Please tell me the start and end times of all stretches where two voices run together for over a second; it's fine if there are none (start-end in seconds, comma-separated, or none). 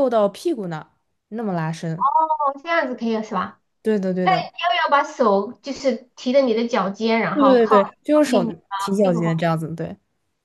7.3-9.4